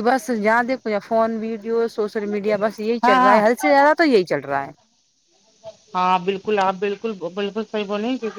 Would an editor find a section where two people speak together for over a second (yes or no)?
no